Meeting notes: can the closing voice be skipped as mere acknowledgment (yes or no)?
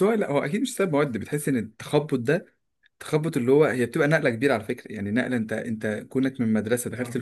yes